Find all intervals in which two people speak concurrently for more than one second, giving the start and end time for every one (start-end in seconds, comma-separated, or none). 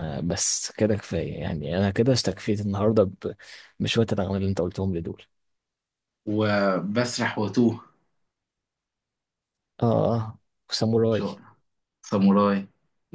none